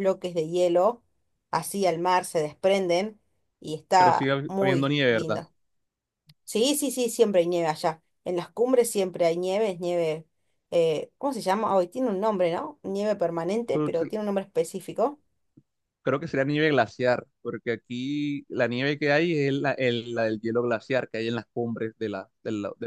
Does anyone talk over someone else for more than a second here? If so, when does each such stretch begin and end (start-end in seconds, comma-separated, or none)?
4.0-5.4